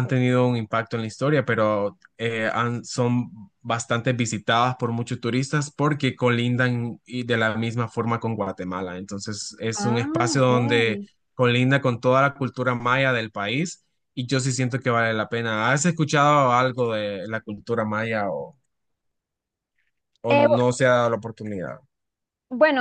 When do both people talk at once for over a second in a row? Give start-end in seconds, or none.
9.8-11.1